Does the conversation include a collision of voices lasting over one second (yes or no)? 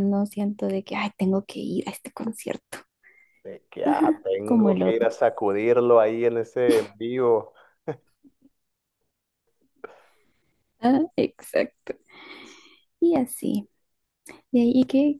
yes